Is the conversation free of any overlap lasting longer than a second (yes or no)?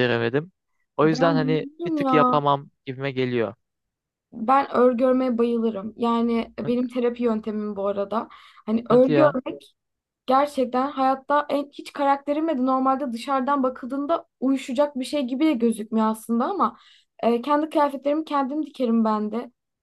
no